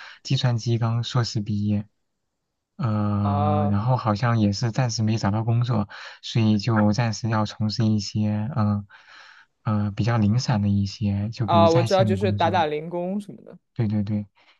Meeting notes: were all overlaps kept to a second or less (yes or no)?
no